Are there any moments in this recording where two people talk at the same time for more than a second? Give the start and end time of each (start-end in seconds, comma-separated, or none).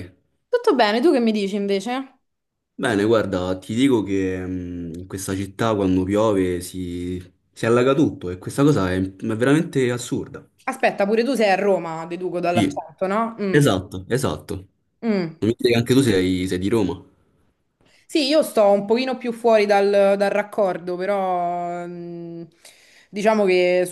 none